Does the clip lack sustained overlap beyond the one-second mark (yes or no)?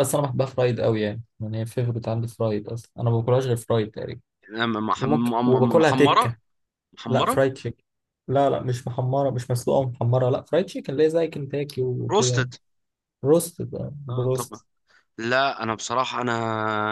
no